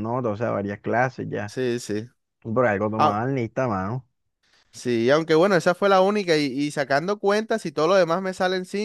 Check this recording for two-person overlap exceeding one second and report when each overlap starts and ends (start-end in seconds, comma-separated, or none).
none